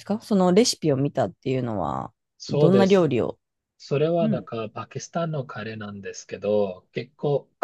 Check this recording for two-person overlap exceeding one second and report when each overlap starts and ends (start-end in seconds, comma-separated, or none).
none